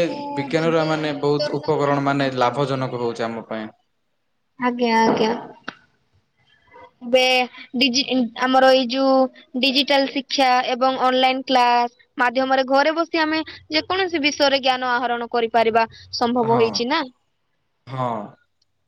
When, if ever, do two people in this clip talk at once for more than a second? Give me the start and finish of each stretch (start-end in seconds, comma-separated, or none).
0.6-2.8